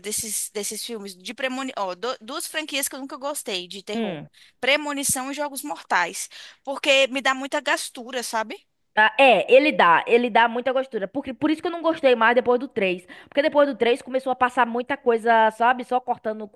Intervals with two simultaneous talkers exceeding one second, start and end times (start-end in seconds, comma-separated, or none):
none